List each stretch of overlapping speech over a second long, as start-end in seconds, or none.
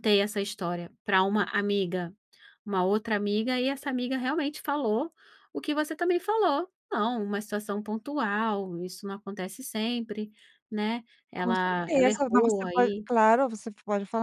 11.4-13.1